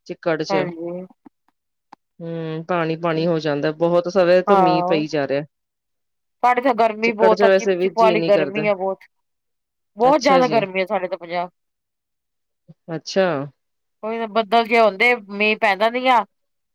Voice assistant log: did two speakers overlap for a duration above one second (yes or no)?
yes